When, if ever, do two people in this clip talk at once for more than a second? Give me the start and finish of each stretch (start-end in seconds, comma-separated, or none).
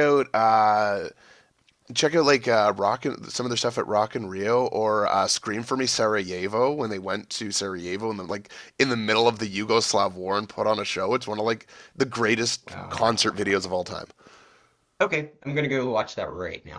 12.7-14.0